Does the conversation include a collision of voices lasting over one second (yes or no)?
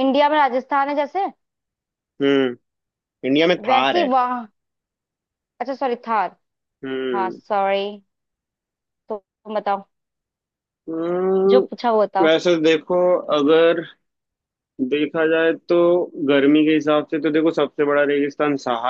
no